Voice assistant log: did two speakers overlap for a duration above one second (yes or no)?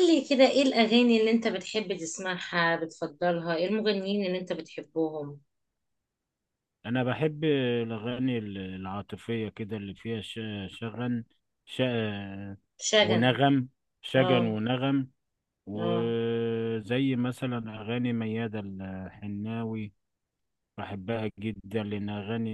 no